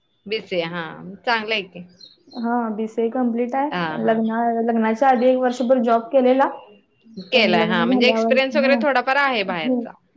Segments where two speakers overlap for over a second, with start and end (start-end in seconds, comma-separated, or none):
7.3-8.8